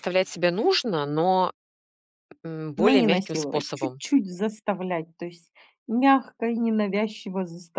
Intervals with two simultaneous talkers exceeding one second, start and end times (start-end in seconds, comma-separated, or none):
2.8-4.0